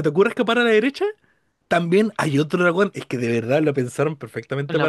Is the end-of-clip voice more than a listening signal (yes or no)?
no